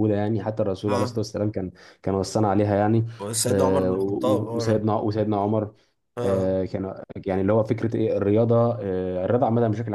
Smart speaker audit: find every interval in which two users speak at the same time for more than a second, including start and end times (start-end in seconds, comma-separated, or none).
3.5-4.8